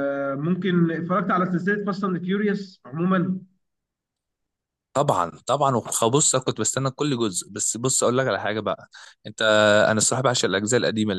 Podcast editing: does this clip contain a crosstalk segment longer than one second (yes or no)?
no